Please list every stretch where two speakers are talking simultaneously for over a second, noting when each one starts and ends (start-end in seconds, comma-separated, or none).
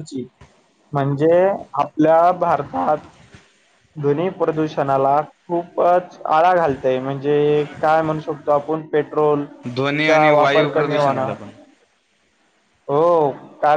10.1-11.3